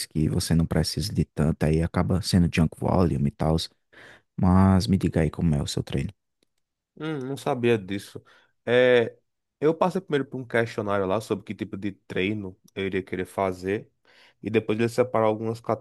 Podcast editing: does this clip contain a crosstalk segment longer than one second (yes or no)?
no